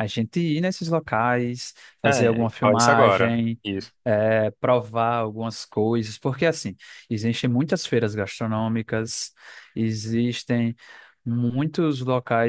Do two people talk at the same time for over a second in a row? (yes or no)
yes